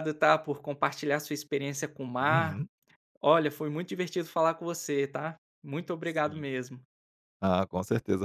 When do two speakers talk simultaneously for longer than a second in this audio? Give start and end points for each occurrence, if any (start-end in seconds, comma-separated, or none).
none